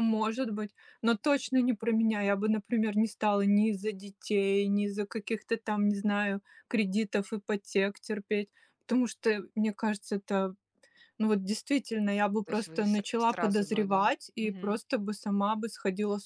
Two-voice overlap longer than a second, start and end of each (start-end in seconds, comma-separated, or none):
12.4-14.8